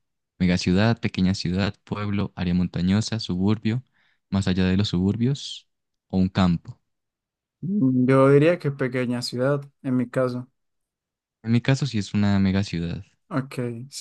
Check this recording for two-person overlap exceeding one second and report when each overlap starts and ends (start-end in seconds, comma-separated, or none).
none